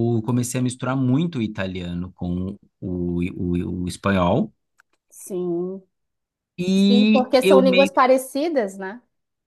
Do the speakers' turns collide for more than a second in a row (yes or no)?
yes